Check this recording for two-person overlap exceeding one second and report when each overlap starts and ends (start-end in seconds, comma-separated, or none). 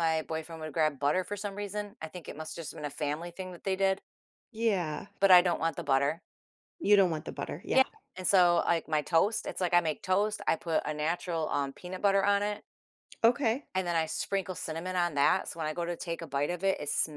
none